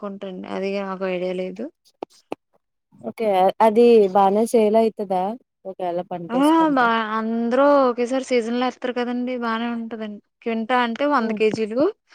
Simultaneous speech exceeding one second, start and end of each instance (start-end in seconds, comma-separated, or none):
none